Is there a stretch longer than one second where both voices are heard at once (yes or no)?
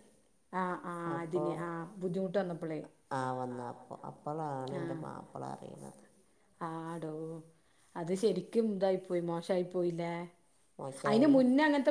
no